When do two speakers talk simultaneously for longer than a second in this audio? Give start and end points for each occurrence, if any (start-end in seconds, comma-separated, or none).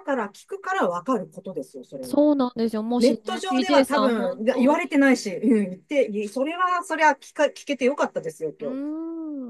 3.0-5.0